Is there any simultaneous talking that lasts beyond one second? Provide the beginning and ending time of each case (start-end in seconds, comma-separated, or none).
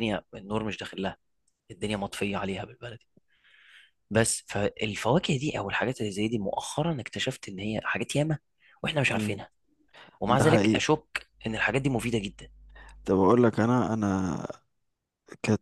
none